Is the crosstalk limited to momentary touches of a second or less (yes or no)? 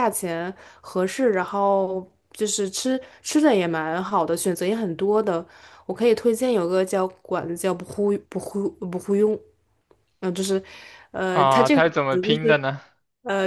no